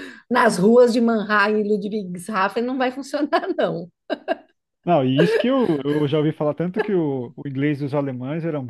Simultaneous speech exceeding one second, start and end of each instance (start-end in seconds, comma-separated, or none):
none